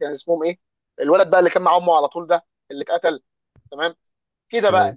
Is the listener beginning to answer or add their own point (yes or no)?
no